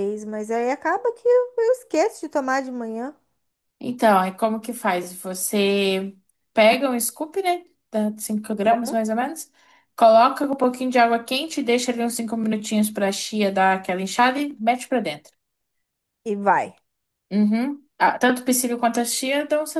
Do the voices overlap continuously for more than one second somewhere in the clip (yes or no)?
no